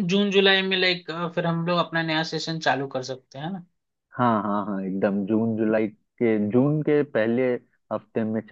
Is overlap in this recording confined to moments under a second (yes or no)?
yes